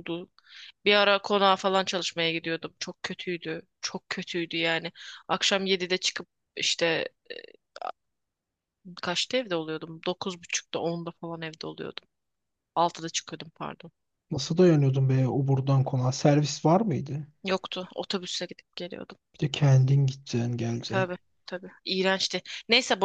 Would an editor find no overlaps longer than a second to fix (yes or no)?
yes